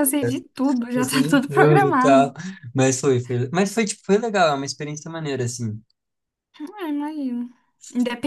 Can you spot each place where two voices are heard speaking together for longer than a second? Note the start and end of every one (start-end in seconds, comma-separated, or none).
0.9-2.3